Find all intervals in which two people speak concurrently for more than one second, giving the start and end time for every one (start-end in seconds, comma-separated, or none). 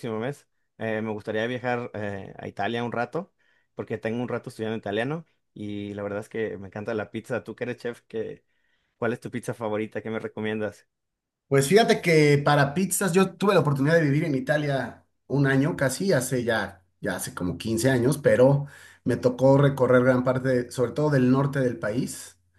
none